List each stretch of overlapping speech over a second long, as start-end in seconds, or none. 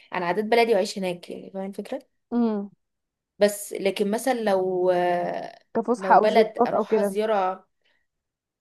6.0-7.2